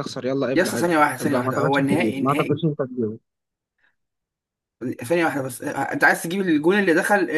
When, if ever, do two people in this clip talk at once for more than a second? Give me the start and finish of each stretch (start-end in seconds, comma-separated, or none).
0.5-2.6